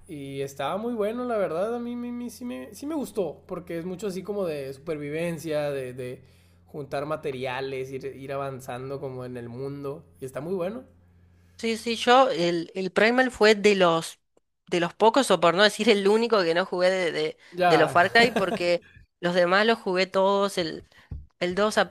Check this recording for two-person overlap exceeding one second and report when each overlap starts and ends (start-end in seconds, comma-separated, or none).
none